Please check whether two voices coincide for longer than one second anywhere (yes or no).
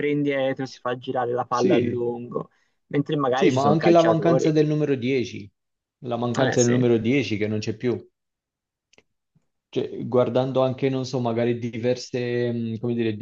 yes